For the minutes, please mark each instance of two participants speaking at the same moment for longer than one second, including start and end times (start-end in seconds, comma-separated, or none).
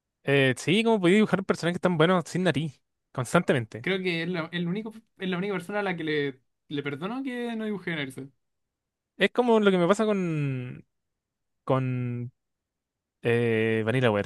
none